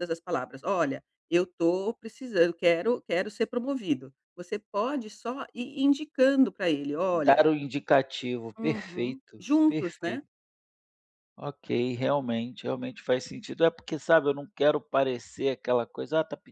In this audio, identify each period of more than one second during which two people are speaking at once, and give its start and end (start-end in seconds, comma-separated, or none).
8.6-10.2